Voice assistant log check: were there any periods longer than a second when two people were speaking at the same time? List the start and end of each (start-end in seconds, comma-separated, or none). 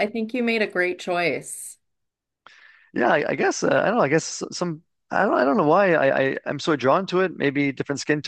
none